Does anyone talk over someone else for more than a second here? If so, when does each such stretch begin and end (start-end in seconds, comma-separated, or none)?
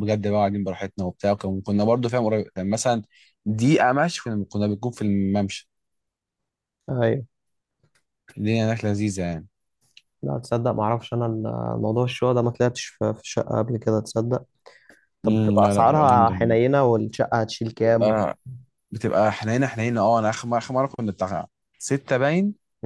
15.2-16.6